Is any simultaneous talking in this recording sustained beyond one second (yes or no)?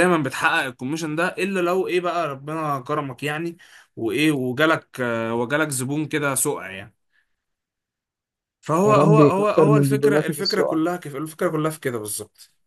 yes